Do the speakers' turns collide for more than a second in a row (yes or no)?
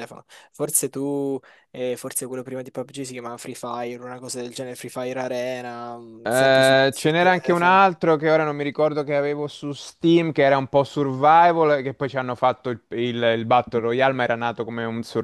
yes